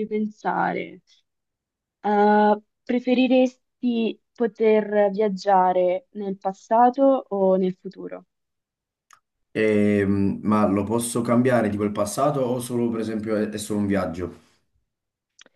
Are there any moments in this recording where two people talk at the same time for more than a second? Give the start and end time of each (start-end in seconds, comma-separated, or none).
none